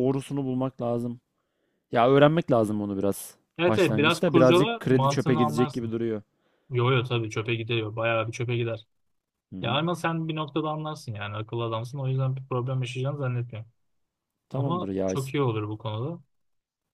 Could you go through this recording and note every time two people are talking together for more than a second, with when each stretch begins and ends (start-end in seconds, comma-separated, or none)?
3.6-5.9